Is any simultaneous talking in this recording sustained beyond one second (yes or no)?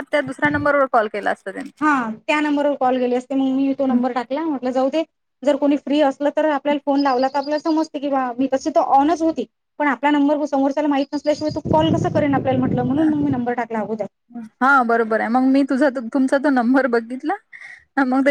no